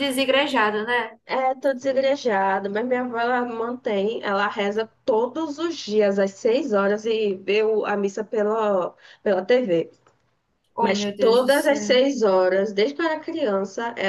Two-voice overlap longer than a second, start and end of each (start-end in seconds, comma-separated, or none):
10.8-12.0